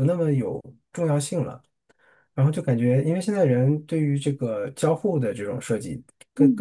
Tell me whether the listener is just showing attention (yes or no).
yes